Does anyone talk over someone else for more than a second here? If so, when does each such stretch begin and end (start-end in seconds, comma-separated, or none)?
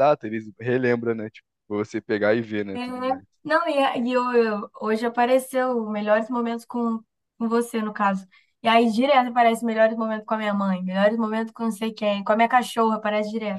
none